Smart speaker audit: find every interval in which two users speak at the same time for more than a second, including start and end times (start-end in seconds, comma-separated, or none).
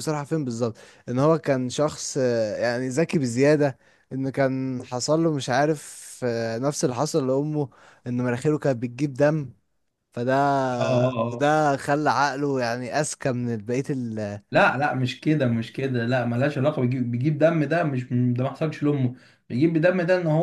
none